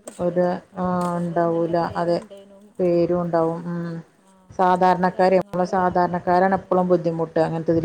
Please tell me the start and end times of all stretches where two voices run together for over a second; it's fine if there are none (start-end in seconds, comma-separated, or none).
4.8-6.9